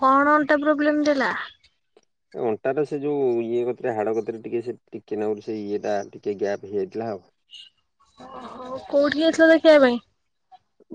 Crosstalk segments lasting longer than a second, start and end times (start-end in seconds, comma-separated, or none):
none